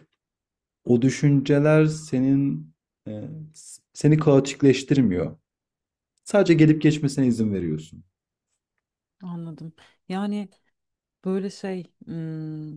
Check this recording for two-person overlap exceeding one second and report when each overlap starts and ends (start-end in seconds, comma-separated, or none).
none